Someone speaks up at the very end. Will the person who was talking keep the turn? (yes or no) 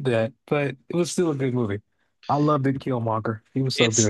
no